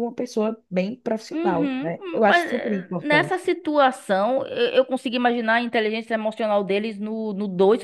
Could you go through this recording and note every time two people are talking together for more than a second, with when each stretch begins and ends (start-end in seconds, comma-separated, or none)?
1.3-3.4